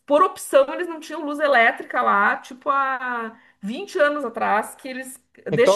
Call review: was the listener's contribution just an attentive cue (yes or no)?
yes